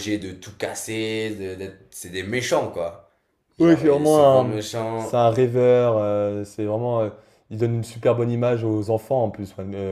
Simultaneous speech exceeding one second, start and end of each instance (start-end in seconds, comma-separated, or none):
3.6-5.2